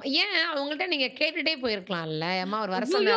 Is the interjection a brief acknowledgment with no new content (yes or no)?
no